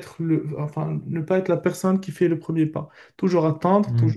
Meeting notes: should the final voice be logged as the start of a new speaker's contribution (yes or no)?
no